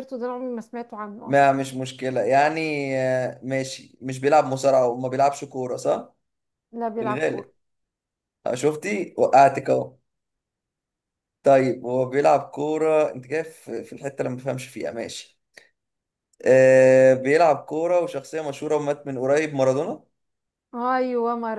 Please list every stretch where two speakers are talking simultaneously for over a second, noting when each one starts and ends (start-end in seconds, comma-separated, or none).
none